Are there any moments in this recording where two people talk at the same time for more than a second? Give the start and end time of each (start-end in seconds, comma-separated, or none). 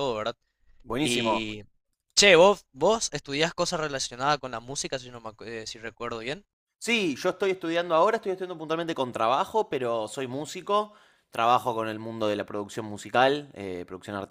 none